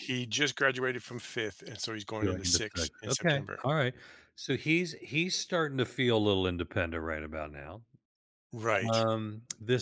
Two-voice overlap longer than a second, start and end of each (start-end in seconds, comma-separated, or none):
2.2-3.6